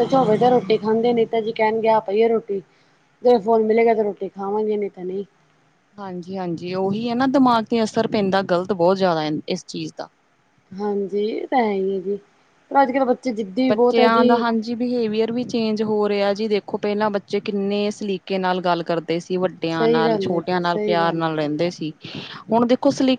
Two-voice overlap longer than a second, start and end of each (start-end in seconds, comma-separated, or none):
19.8-21.5